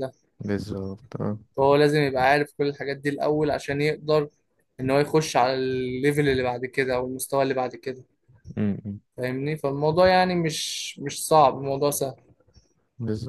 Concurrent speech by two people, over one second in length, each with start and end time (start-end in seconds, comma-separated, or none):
none